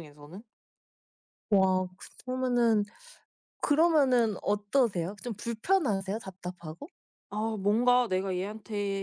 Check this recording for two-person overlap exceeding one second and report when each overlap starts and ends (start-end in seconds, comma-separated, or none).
none